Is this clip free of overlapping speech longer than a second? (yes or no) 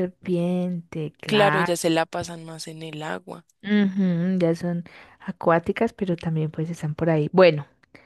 yes